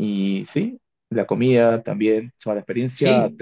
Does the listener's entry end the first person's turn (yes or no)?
no